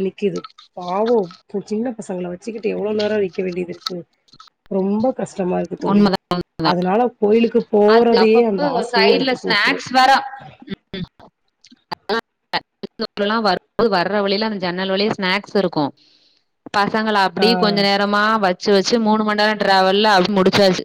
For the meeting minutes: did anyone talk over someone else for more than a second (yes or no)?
yes